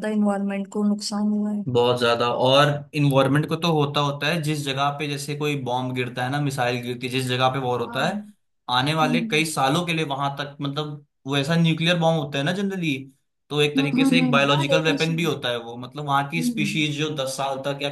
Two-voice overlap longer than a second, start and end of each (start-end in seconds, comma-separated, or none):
13.8-15.3